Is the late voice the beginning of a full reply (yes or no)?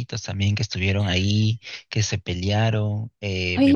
yes